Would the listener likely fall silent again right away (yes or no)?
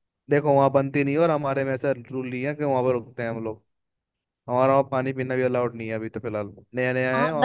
no